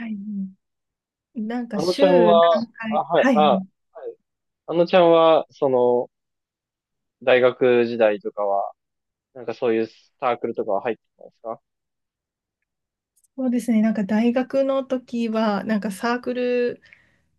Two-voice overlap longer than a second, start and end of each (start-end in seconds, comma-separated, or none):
1.7-3.7